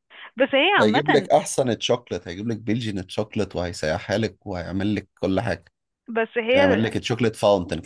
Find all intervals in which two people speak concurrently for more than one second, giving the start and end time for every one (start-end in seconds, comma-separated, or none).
none